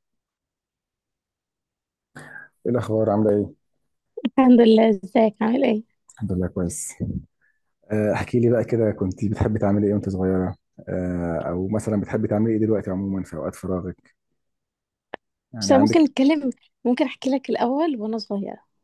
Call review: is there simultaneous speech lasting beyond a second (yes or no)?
no